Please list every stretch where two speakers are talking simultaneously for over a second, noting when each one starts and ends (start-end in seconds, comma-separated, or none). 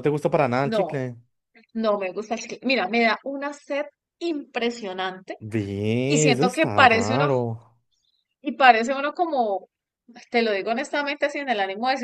6.1-7.3